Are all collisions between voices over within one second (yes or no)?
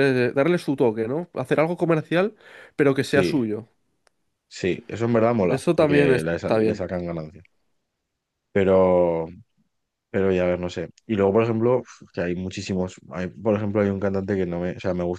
no